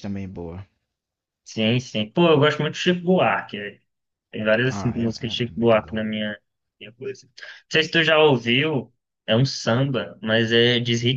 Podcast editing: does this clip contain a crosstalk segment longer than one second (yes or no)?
yes